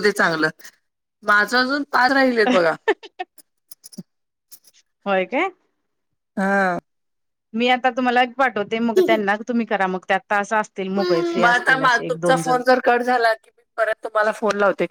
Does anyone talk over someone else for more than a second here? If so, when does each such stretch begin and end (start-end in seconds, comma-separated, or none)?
10.8-12.6